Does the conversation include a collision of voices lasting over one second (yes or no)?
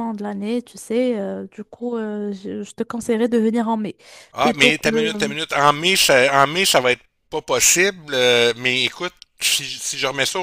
no